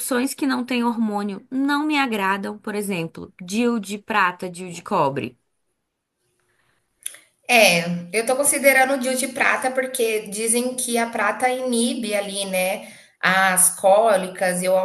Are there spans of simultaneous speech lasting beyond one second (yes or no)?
no